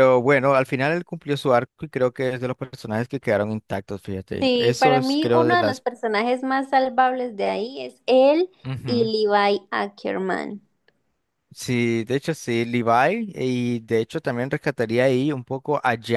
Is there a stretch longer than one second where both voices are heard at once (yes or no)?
yes